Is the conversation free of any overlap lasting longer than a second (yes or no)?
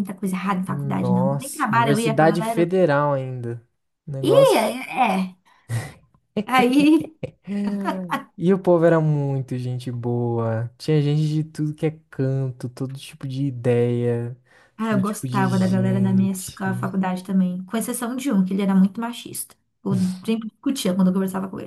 no